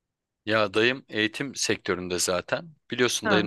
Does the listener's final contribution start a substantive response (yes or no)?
no